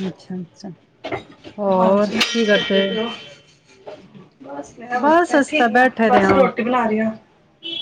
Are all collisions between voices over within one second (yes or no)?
no